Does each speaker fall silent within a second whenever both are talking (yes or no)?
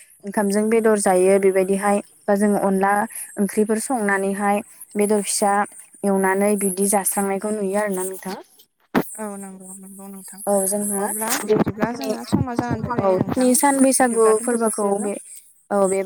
no